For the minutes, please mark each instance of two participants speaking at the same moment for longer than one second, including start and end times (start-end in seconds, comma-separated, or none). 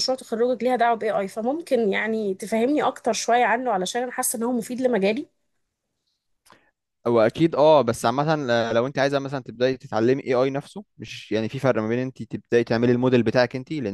none